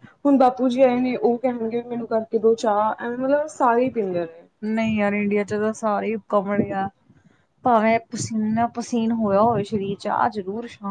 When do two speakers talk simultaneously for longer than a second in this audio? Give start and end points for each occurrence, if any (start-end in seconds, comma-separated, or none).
none